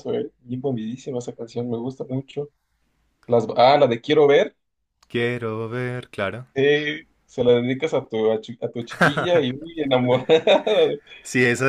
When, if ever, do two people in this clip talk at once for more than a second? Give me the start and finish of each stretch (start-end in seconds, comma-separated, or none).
none